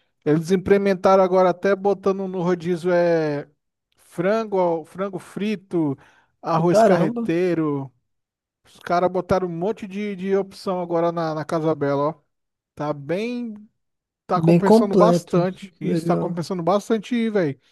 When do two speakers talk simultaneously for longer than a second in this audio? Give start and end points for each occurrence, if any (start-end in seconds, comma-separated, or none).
14.3-16.4